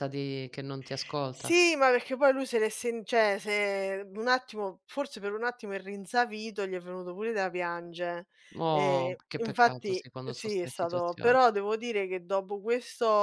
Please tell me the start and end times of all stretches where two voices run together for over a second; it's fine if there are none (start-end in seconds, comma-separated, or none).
8.7-11.3